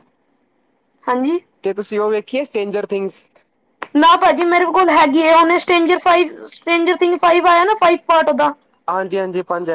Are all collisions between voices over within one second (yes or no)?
yes